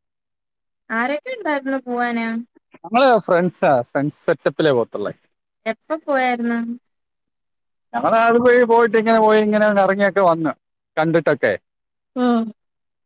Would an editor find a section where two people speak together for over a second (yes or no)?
no